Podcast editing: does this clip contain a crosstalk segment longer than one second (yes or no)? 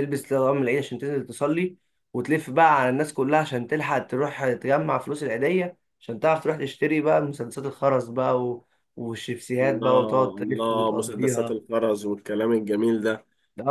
yes